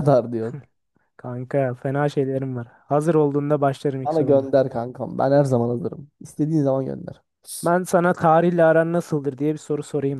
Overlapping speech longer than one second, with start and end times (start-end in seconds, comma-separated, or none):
none